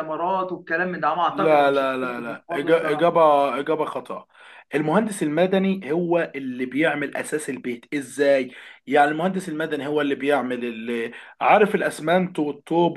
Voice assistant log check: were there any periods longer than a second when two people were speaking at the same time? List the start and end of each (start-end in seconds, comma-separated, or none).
1.3-3.2